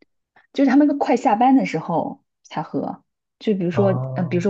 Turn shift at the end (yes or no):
no